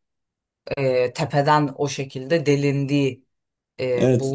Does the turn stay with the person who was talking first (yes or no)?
no